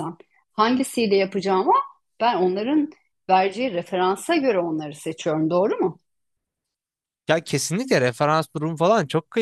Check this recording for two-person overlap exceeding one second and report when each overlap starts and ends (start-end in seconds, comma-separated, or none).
none